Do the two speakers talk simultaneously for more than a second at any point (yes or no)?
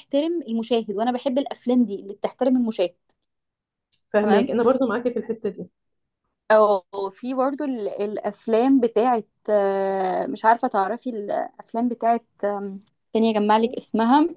no